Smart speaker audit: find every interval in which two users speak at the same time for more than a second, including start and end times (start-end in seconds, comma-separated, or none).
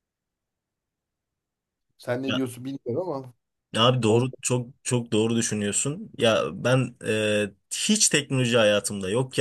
none